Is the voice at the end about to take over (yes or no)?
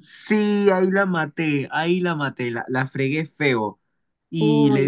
no